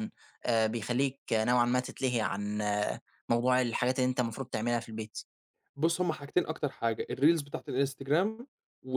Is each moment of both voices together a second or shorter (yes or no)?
yes